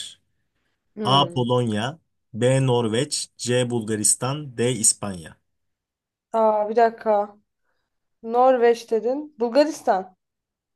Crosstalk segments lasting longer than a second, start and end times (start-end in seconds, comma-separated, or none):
none